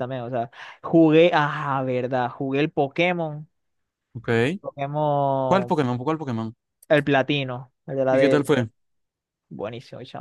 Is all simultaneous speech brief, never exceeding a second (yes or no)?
yes